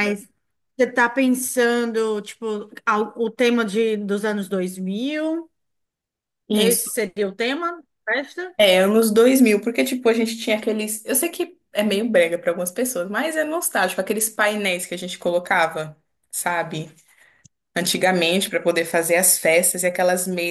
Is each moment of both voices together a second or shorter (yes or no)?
yes